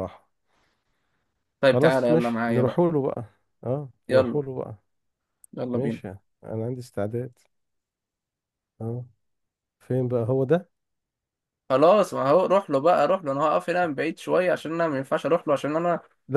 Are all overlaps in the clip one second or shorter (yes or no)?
no